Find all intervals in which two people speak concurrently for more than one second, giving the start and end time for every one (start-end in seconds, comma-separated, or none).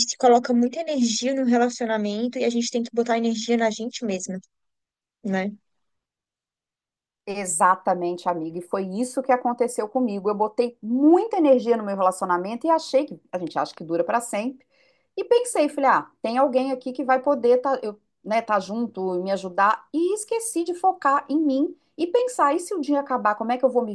none